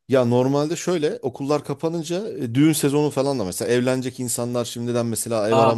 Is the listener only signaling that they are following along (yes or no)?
yes